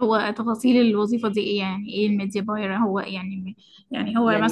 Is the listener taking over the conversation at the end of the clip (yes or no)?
yes